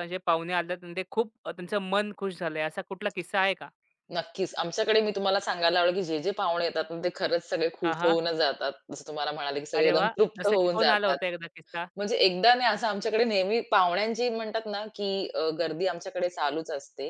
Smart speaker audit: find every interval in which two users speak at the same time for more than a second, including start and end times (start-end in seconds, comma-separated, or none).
9.8-11.2